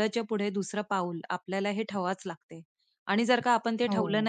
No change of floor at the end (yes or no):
yes